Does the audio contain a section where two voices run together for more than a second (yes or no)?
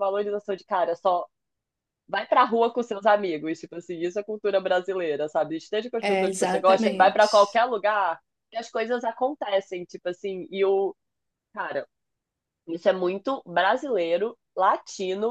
yes